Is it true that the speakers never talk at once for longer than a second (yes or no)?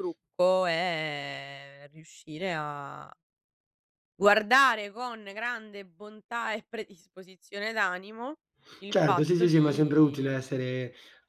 no